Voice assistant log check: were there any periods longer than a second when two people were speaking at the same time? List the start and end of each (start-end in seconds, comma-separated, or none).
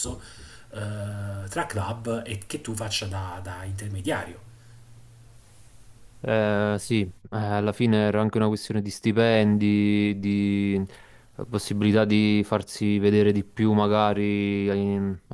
none